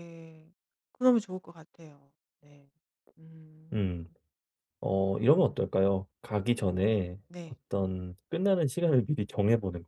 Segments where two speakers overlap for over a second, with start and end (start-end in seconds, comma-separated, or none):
none